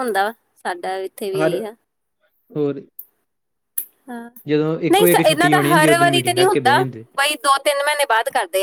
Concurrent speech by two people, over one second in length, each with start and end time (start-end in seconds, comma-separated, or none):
4.9-6.8